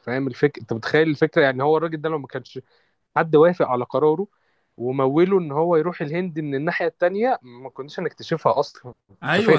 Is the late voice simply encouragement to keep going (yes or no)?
no